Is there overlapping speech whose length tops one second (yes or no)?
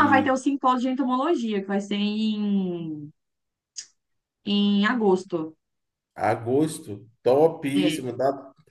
no